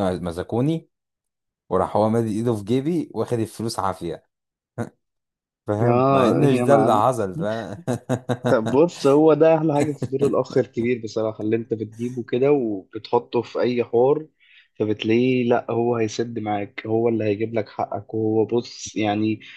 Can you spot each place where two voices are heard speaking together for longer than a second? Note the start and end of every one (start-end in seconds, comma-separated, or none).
5.8-7.2